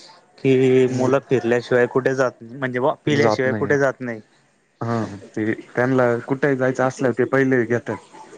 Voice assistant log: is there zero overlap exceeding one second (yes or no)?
yes